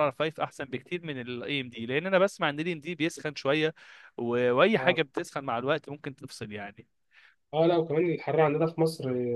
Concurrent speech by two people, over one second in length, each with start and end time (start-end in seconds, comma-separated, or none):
none